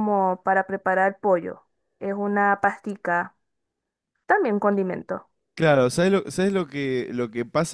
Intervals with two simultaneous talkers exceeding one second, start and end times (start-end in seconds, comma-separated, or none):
none